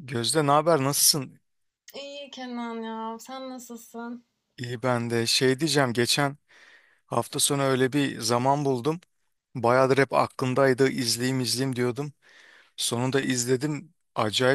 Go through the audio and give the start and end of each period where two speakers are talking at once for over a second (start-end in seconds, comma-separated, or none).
none